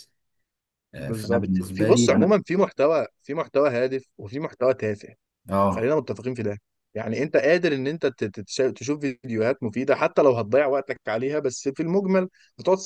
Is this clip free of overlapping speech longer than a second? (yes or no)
no